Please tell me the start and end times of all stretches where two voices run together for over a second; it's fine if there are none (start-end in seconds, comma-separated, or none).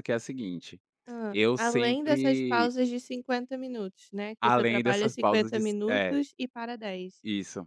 1.3-2.7, 4.4-6.2